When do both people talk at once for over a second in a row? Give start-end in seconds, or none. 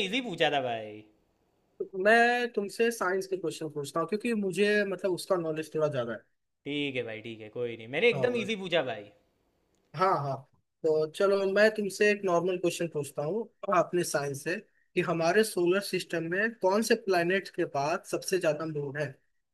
none